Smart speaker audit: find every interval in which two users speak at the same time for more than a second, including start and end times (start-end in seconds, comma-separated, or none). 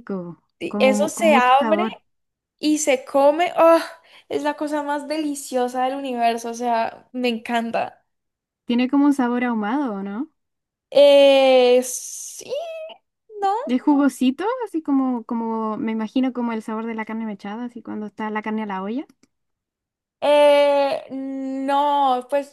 0.6-1.9